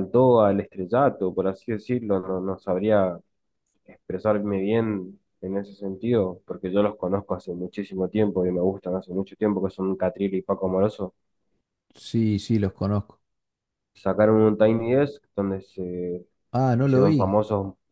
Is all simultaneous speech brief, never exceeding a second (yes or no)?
yes